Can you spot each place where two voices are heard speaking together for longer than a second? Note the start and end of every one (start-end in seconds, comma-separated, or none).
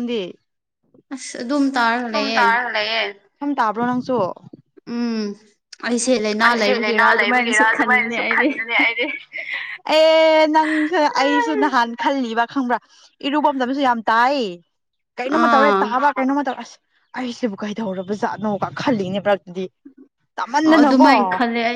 6.1-8.5